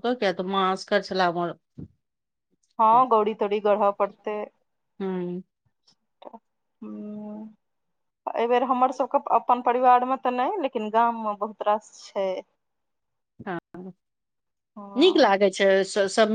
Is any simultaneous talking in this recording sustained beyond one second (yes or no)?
yes